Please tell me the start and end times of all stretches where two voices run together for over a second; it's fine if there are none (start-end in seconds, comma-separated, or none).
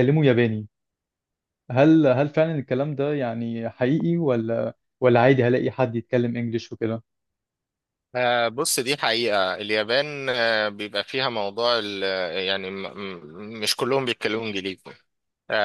none